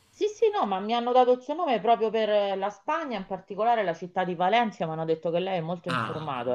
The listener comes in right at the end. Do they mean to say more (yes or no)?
yes